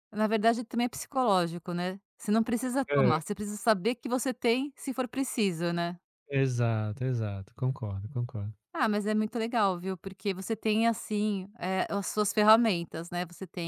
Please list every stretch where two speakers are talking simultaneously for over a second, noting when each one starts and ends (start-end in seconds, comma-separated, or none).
none